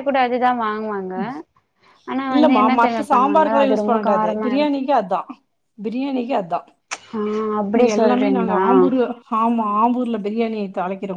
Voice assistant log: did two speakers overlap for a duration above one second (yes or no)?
yes